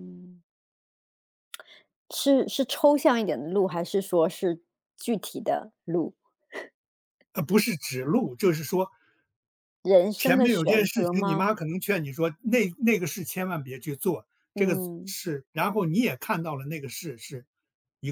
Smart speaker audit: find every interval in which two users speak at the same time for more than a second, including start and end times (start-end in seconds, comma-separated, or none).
10.2-11.5